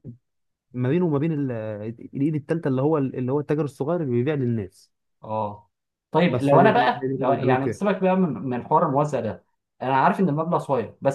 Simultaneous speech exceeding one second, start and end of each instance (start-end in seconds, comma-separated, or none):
6.3-7.8